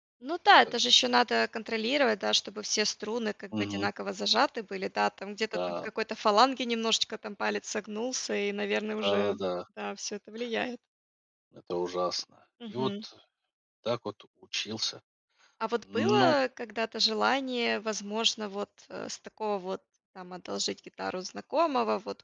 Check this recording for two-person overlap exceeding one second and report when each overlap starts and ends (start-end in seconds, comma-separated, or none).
none